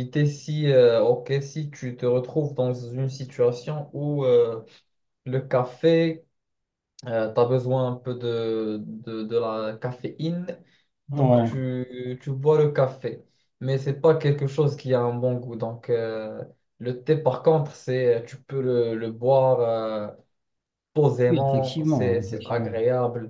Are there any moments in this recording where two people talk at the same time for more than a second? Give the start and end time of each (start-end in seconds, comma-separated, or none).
21.3-22.7